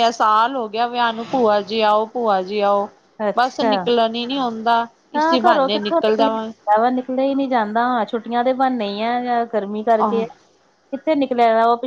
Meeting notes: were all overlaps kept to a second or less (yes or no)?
no